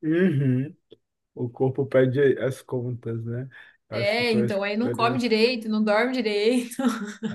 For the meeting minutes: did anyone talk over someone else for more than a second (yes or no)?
yes